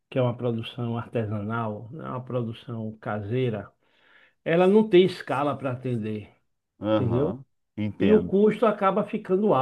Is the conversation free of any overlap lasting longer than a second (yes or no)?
yes